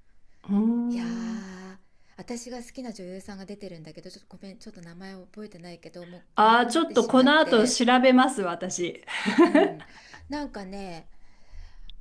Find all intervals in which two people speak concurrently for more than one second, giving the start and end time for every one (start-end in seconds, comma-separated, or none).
6.3-7.8